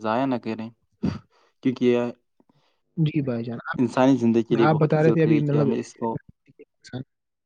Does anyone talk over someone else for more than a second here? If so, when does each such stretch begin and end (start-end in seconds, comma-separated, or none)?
4.4-6.2